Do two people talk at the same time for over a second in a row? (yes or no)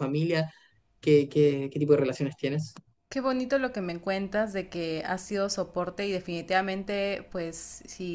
no